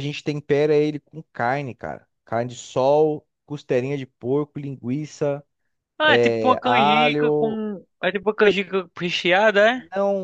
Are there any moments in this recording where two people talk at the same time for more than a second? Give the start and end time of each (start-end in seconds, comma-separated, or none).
6.1-7.6